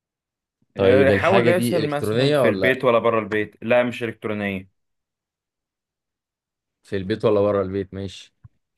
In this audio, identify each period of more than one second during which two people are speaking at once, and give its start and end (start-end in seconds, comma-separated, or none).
0.8-2.8